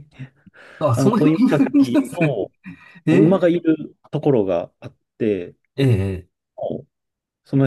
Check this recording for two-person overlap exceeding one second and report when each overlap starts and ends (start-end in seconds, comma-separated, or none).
0.9-2.3